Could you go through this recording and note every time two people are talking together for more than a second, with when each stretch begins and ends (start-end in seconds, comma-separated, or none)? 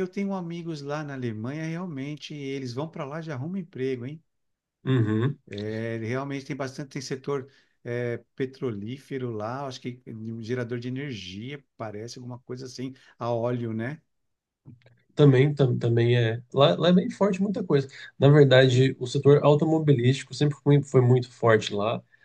none